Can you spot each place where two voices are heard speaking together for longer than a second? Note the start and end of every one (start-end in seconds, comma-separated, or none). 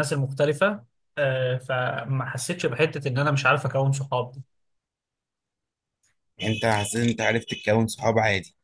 none